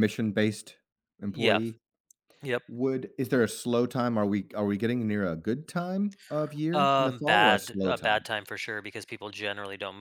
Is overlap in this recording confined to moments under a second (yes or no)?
no